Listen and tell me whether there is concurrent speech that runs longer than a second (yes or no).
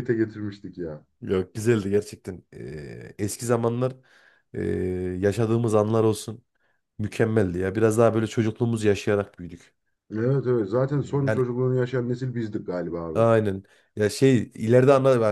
no